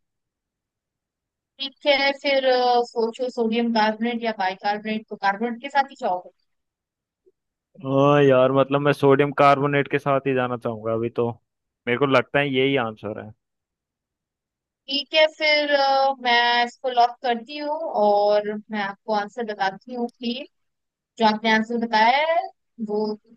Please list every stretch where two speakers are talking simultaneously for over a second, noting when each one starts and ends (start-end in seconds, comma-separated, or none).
none